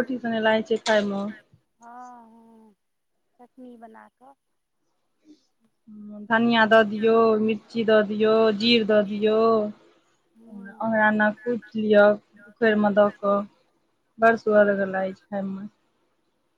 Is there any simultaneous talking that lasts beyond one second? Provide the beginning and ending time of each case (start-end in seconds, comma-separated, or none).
none